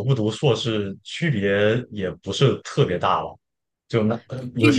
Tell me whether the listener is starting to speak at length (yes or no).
yes